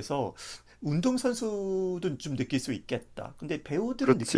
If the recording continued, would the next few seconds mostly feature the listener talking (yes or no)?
yes